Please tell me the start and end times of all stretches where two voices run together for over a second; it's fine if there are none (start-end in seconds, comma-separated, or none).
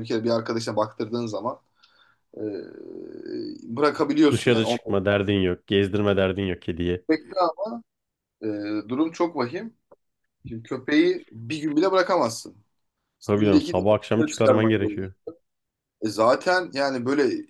13.3-15.1